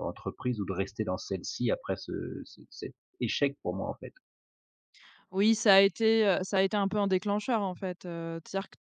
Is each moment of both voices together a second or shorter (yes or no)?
yes